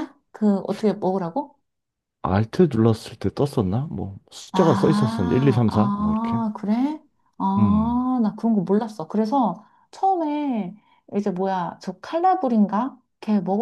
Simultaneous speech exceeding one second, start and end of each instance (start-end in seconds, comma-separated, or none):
4.5-6.4